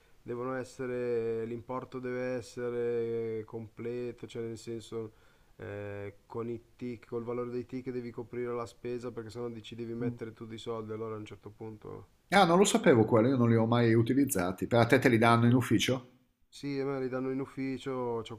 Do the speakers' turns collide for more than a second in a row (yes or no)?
no